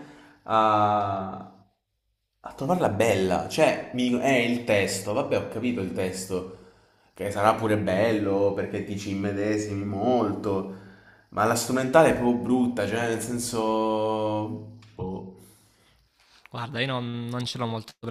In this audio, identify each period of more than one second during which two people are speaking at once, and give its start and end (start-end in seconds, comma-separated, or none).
none